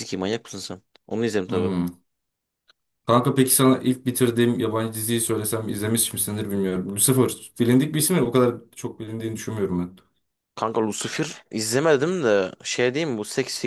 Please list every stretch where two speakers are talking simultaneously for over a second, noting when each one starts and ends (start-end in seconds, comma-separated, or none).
none